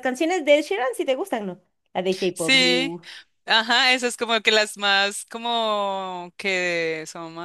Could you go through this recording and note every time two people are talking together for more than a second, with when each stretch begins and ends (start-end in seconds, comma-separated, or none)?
none